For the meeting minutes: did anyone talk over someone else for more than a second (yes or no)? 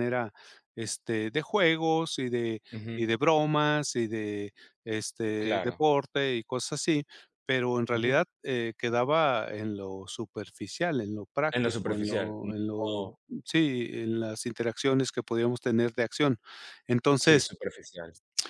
yes